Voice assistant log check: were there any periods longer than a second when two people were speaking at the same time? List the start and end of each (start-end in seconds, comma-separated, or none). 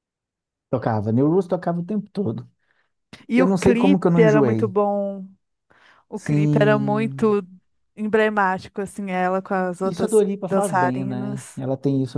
3.4-4.7, 6.2-7.4, 9.8-11.6